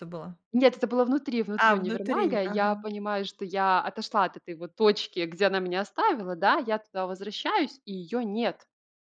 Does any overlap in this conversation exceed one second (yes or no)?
yes